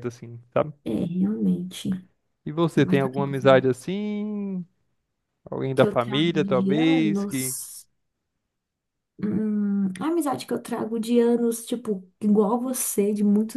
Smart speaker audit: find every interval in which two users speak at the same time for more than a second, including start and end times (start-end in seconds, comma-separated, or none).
5.8-7.6